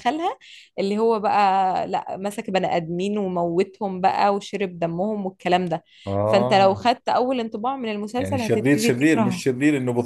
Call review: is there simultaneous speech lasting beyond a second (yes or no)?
yes